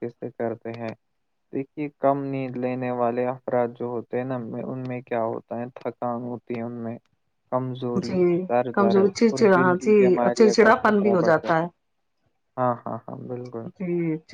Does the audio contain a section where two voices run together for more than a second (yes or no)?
yes